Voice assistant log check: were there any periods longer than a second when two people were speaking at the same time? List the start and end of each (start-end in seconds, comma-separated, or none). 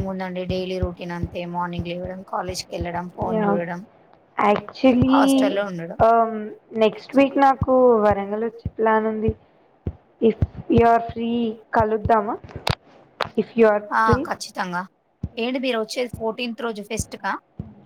none